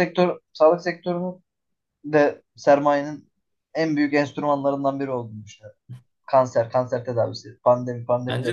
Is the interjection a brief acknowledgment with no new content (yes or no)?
no